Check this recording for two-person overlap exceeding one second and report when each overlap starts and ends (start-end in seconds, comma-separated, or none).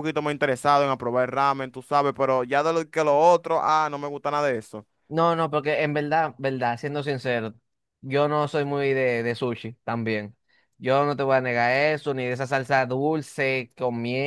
none